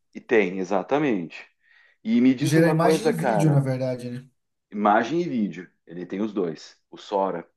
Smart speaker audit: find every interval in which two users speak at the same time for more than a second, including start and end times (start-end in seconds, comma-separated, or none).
2.4-3.6